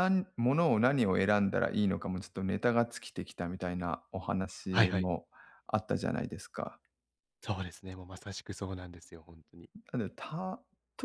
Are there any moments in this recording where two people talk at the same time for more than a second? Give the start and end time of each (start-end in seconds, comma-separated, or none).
none